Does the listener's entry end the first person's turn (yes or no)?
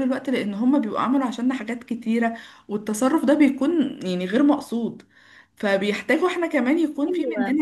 no